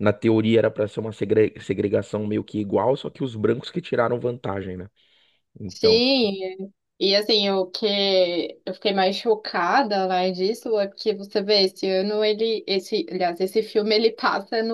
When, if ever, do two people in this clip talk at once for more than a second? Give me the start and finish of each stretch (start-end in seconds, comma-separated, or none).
none